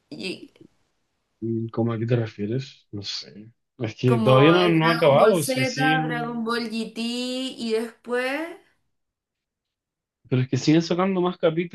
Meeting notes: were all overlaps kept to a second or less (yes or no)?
no